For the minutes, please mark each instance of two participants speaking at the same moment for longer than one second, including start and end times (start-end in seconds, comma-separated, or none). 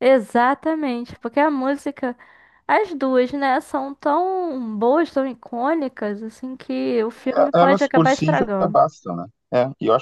7.1-8.8